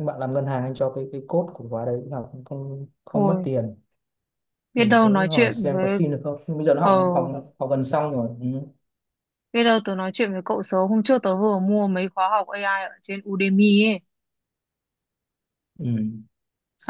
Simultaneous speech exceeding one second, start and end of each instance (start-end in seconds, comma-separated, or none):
4.8-6.0